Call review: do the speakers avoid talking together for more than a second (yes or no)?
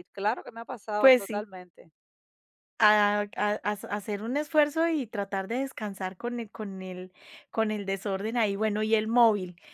yes